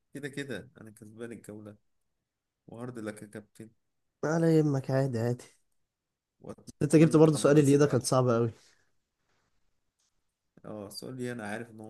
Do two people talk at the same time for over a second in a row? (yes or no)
yes